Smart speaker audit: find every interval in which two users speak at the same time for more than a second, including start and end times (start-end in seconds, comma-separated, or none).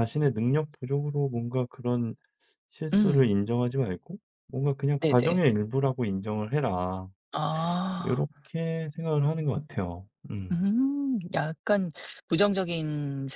none